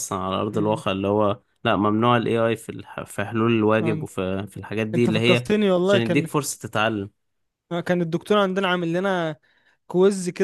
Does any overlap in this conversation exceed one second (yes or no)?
yes